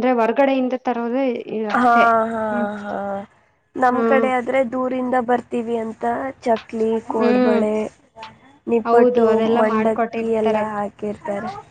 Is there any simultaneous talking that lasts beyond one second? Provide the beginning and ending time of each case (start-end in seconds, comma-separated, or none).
8.9-10.7